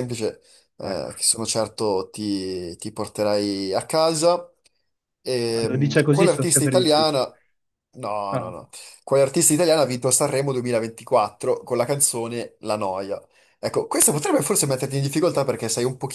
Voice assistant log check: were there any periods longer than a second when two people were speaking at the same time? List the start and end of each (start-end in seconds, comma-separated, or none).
5.5-7.2